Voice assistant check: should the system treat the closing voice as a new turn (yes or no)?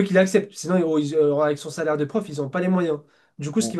no